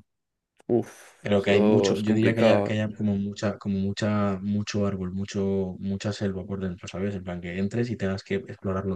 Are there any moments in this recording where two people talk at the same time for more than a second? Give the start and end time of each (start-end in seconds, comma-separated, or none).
1.4-2.8